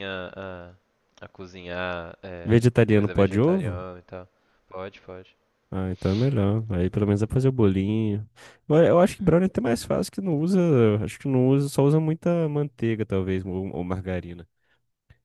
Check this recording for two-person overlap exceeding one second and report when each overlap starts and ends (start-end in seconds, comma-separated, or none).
2.4-3.9